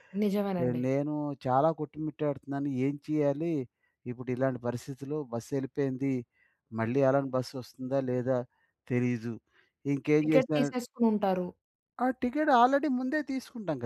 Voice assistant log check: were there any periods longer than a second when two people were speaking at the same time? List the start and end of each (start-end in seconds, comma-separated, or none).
none